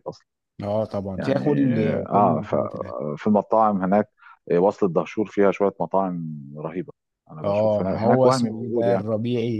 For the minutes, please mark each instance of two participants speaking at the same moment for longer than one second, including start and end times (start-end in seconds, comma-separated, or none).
7.4-9.0